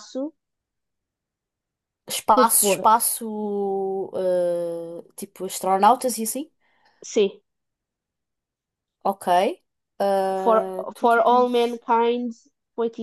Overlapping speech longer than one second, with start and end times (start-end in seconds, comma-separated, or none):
10.3-11.8